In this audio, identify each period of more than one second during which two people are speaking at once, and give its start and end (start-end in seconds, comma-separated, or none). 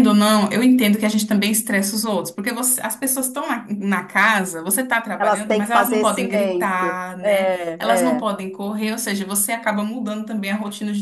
5.2-8.2